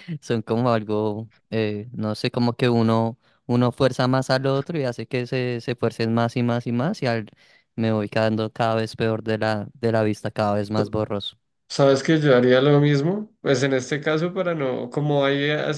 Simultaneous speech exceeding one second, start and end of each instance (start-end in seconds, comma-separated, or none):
none